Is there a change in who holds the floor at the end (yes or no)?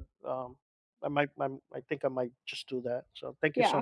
yes